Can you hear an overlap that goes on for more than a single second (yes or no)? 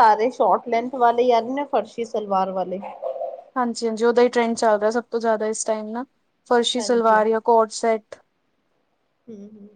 no